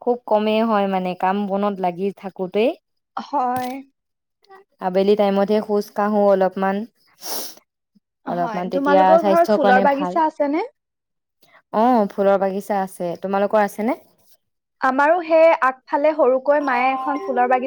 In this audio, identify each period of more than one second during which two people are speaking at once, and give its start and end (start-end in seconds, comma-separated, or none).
8.4-10.2